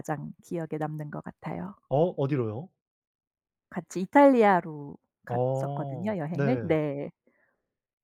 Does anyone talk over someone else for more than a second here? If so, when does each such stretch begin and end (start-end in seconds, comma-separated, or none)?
5.3-6.8